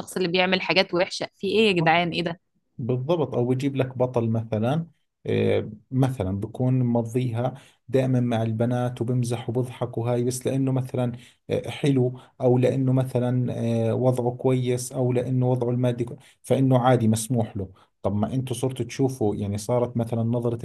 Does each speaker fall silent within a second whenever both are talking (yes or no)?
yes